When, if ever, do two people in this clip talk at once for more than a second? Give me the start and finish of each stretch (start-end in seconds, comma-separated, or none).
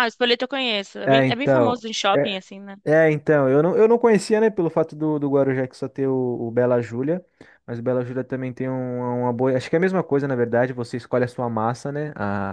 1.0-2.4